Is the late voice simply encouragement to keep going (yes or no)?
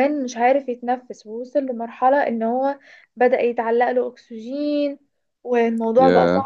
yes